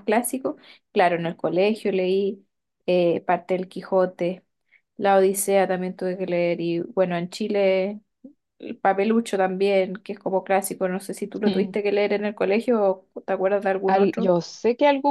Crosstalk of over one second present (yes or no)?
no